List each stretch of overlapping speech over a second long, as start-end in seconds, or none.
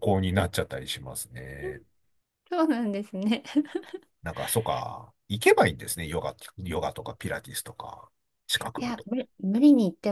none